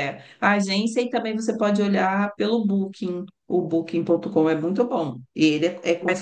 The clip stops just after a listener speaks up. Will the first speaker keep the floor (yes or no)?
yes